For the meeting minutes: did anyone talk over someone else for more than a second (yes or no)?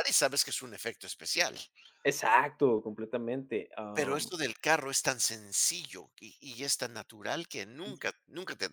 no